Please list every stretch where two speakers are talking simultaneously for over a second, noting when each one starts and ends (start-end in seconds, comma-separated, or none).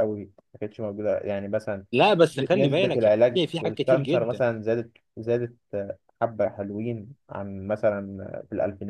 2.5-4.4